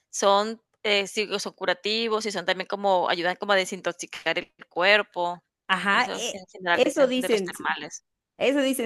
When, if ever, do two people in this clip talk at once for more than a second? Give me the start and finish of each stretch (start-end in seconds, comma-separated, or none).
5.9-7.7